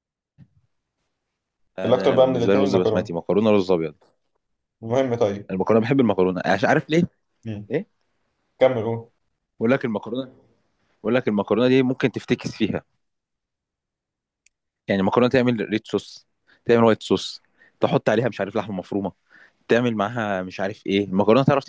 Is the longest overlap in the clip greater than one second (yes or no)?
yes